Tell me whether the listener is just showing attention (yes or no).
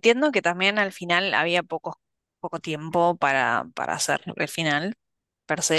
yes